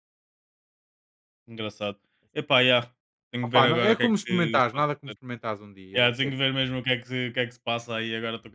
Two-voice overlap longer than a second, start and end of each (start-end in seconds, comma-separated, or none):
3.5-5.2